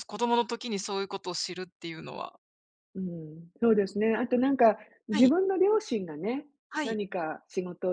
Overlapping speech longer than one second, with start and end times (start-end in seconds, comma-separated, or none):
none